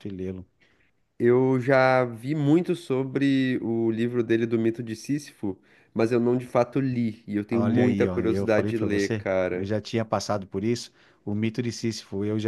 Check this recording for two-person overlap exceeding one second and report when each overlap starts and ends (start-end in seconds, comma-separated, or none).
7.5-9.7